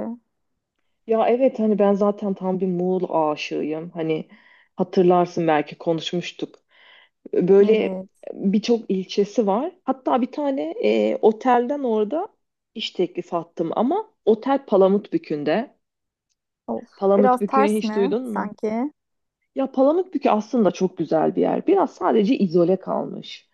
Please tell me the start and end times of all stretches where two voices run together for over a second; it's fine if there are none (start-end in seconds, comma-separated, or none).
17.0-18.5